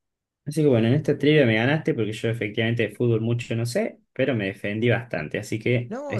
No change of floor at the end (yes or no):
no